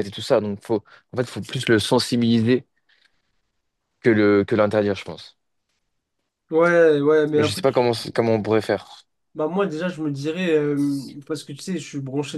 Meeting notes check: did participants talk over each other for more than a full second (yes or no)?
no